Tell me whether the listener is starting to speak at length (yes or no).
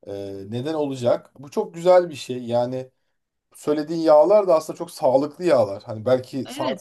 yes